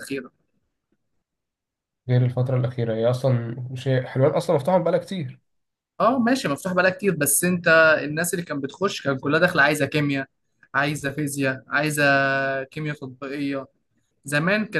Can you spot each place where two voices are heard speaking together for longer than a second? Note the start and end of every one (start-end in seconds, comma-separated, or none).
none